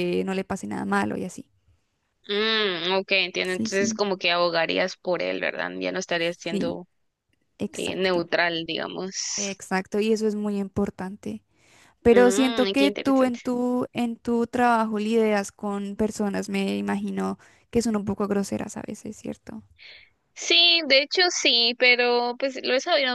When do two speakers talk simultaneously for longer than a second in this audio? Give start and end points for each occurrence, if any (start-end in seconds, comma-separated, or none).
12.1-13.4